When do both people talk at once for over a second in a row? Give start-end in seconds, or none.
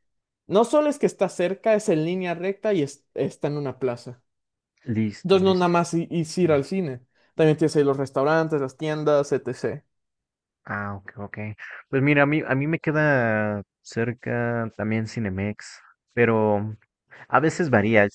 none